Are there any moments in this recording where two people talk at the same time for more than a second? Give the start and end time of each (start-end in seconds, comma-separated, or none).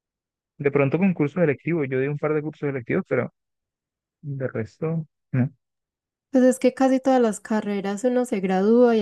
none